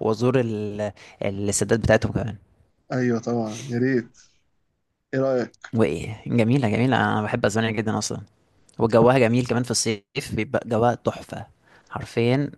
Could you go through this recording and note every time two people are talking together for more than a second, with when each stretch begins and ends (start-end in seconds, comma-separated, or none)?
none